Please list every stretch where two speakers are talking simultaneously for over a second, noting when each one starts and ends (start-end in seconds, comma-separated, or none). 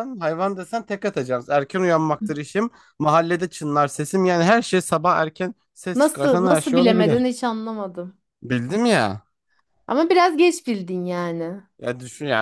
6.0-7.3